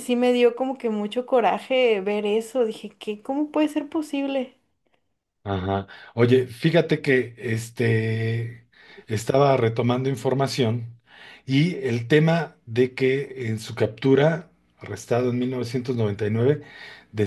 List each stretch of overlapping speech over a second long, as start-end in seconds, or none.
none